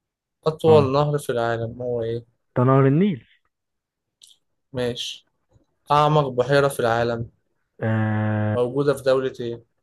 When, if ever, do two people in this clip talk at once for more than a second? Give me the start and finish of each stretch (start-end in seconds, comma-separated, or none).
none